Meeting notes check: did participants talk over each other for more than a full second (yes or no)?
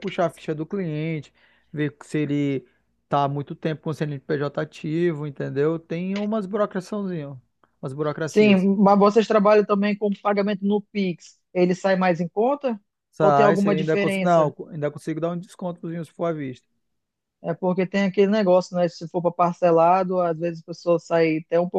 yes